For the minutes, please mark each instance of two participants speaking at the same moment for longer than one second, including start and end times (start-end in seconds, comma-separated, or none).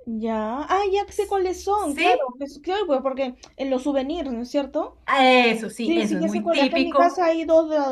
5.8-7.3